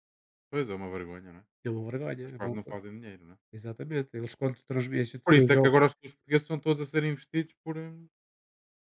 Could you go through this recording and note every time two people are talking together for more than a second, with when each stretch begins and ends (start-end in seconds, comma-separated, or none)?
none